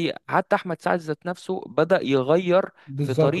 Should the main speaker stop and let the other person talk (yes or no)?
yes